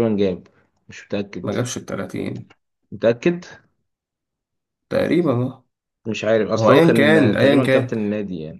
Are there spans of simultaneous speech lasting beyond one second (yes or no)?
yes